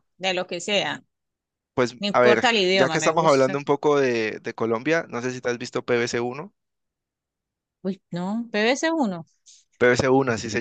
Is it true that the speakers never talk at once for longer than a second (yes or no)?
no